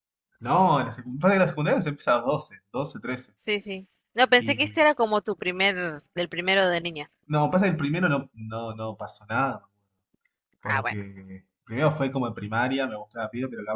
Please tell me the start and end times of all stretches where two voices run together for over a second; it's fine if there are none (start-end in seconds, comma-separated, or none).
none